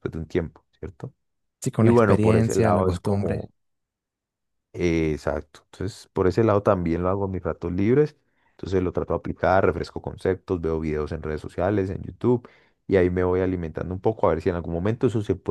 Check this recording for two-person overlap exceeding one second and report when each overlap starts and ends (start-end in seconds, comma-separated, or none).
1.8-3.5